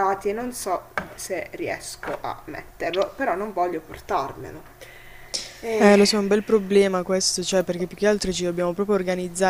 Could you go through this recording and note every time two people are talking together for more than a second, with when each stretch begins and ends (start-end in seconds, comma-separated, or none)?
none